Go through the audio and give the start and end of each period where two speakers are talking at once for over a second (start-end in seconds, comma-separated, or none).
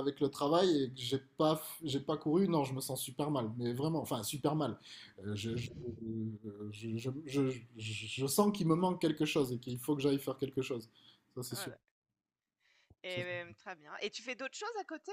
none